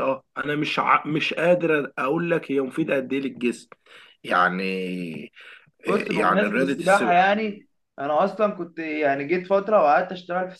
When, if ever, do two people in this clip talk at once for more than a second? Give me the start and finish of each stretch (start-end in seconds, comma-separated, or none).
5.9-7.2